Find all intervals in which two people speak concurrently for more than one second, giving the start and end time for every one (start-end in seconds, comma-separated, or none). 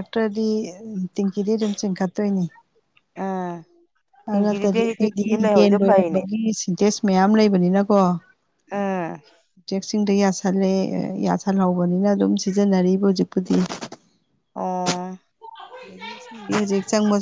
4.3-6.2